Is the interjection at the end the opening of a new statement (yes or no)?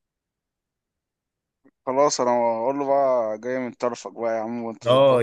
yes